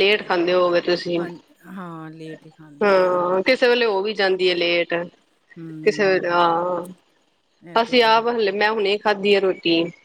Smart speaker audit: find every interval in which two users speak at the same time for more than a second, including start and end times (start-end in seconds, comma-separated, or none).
none